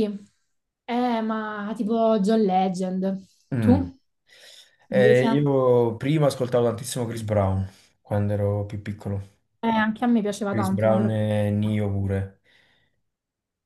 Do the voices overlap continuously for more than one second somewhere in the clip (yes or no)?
yes